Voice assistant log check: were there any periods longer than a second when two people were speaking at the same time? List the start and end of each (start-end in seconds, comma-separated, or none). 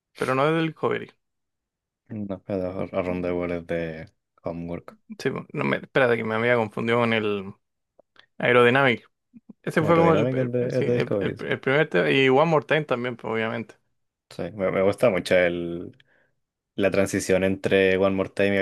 9.8-11.5